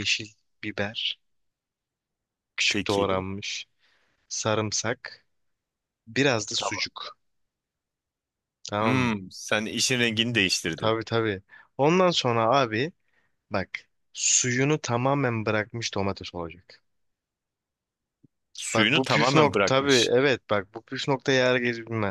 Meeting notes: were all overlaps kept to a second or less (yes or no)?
no